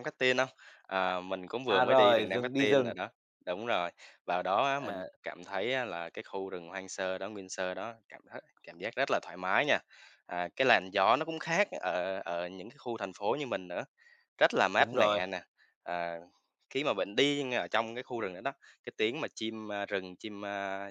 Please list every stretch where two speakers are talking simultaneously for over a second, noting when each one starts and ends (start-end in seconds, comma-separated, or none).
1.7-2.9